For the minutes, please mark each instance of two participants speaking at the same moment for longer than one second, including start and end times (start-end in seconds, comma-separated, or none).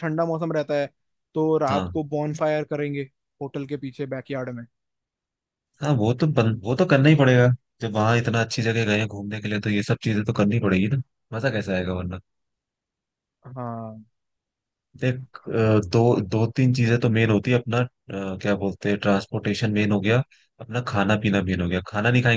none